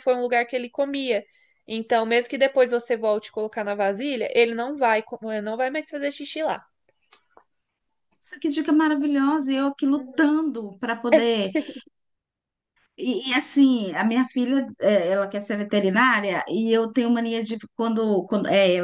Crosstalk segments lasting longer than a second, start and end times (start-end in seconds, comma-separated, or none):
none